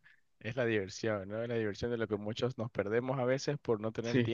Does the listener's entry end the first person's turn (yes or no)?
no